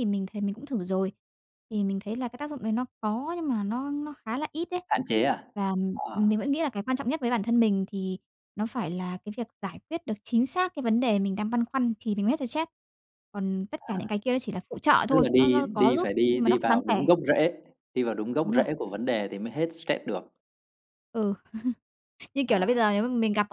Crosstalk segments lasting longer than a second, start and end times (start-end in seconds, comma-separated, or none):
15.1-17.0